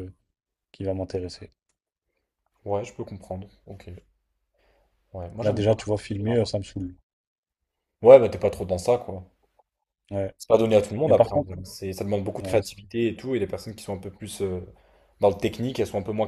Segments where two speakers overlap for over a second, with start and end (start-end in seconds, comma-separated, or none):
none